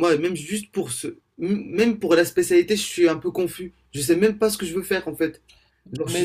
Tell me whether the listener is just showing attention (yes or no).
no